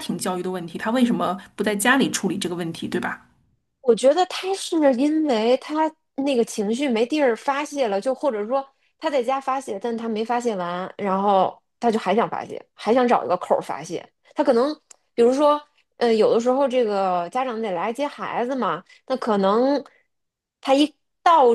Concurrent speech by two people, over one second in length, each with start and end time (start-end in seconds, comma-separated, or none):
none